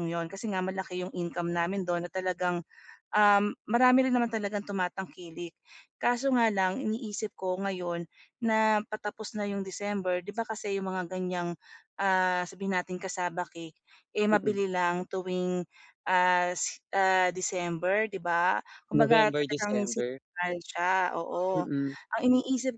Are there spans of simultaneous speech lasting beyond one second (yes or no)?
yes